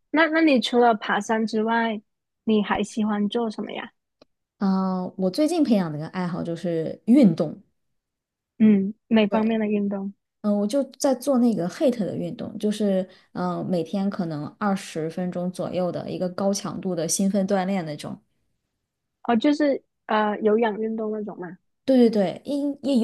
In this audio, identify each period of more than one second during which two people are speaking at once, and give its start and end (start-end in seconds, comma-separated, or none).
none